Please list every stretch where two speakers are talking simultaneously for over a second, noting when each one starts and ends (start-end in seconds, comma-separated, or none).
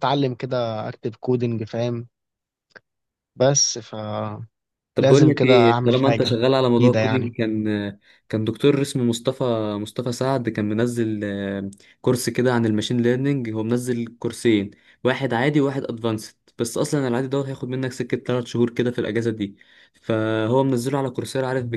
5.4-7.3